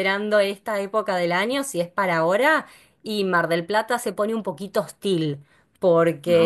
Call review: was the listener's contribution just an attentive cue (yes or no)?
yes